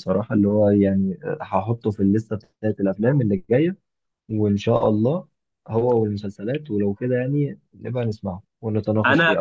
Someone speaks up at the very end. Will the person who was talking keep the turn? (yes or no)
no